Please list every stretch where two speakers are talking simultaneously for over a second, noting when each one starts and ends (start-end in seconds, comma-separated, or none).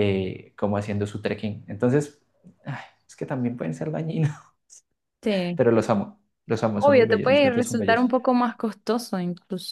6.8-8.1